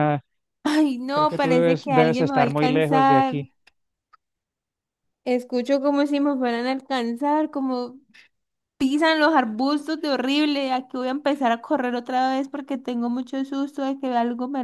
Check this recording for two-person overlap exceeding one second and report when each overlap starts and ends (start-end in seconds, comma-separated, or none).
1.1-3.4